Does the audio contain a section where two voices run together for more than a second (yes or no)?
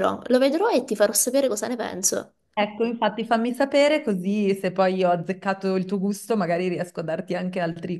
no